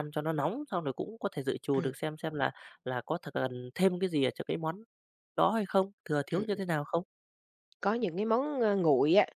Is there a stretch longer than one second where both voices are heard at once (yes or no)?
no